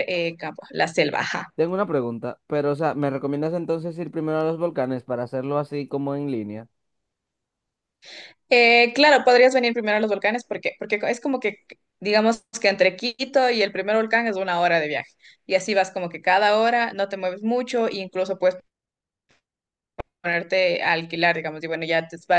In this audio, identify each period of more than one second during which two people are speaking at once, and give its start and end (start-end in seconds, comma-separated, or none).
none